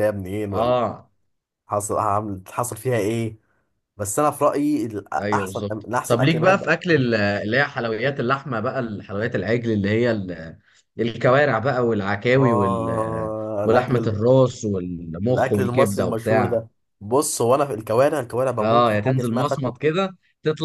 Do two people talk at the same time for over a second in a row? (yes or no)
yes